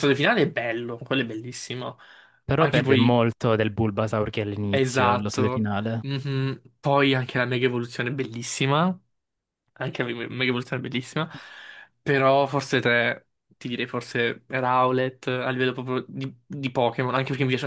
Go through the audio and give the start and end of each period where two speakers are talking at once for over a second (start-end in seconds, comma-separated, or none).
4.7-6.0